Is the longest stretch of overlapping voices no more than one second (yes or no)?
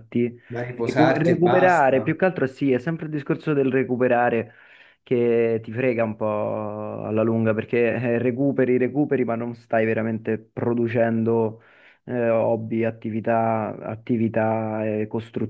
no